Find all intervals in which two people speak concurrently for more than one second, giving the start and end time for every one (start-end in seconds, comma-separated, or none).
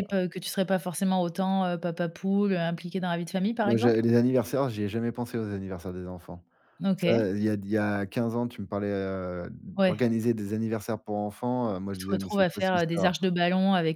11.9-13.1